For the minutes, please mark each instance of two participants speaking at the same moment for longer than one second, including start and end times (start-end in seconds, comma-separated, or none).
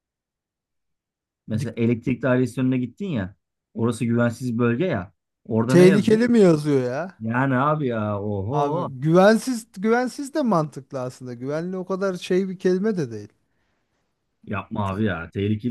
none